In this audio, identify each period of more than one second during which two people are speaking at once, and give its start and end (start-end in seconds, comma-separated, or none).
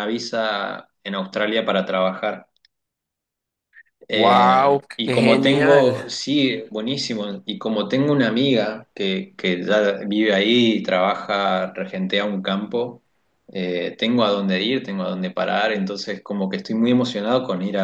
4.1-6.0